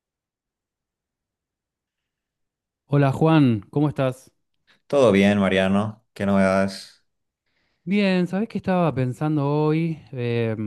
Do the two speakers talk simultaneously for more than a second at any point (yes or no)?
no